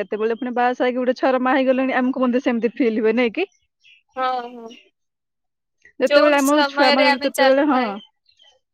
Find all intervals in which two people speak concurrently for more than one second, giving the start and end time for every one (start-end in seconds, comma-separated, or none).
6.1-7.8